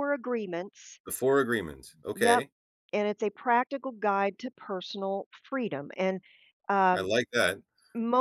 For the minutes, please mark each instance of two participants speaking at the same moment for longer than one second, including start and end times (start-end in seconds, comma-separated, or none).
none